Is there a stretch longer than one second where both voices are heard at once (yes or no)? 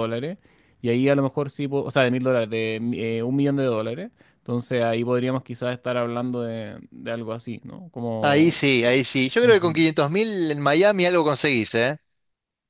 yes